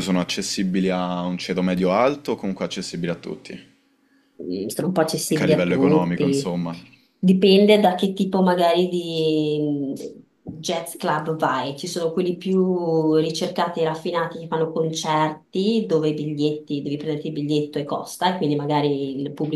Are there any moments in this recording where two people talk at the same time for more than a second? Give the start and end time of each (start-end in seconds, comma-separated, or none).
5.3-6.5